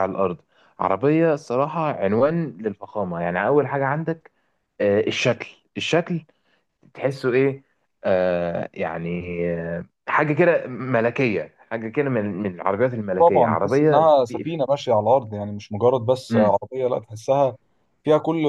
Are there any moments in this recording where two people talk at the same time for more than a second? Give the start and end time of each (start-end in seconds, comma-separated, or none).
13.2-14.5